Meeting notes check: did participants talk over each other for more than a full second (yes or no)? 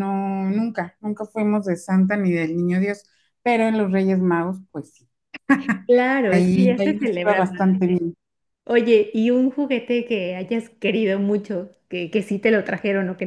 yes